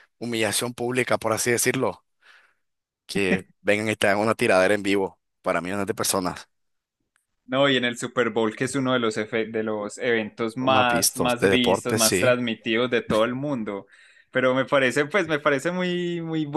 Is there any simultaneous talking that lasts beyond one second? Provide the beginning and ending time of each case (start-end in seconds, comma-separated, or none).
10.6-12.4